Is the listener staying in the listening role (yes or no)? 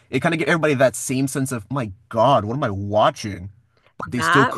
no